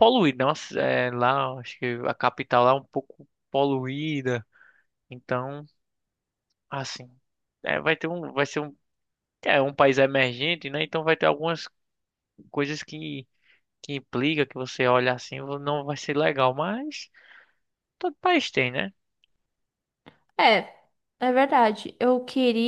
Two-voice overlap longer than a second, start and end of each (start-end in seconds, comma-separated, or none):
none